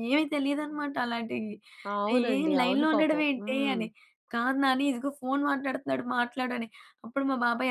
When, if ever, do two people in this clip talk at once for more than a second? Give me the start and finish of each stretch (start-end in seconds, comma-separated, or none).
2.2-3.8